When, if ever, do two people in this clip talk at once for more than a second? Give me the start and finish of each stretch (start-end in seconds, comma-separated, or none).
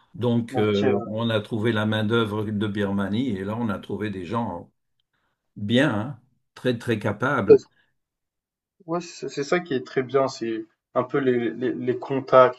none